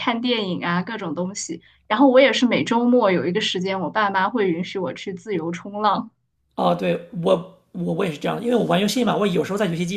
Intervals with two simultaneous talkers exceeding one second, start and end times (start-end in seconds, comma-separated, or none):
none